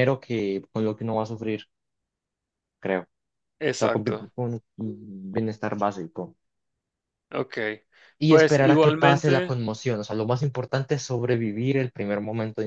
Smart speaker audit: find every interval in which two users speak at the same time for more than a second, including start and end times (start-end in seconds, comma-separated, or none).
8.3-9.5